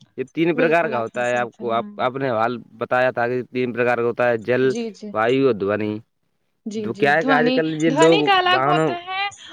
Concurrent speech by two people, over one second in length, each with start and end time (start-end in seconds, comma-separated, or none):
0.6-2.2, 6.8-8.9